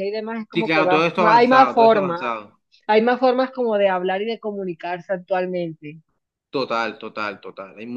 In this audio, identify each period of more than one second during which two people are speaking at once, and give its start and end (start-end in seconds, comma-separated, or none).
0.5-2.3